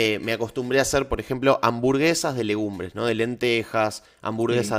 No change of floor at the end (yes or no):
yes